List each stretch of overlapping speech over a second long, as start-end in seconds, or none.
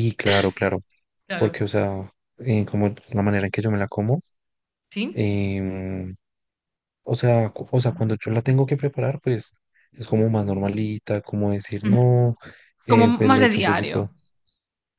12.9-14.1